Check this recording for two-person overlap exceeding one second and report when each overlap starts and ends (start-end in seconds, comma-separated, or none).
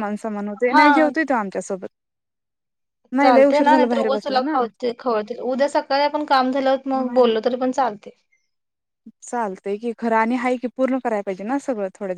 3.2-4.6